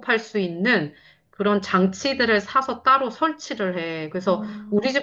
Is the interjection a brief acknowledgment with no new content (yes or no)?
yes